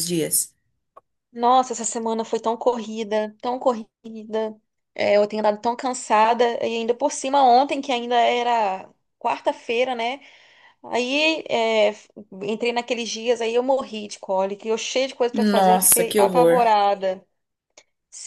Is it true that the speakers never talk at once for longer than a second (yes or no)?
no